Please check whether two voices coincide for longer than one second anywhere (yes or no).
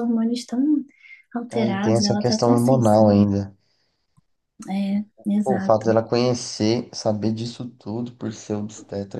yes